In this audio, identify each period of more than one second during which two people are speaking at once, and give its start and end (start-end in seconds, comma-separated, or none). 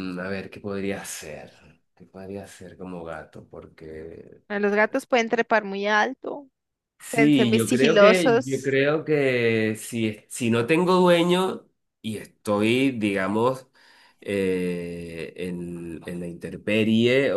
7.1-8.8